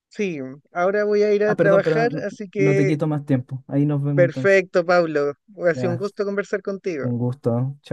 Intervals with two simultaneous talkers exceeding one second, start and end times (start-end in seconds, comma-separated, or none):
1.4-3.0